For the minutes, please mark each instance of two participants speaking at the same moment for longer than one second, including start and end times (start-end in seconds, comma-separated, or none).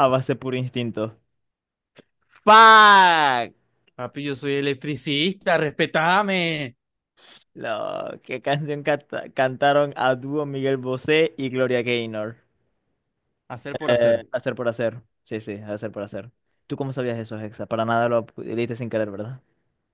none